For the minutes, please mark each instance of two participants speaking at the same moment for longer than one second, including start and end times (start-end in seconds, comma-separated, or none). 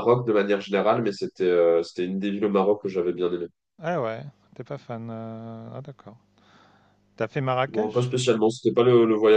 none